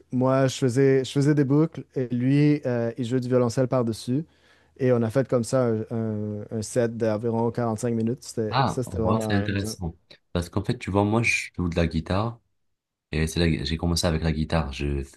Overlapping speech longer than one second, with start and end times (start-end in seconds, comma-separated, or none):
8.5-9.8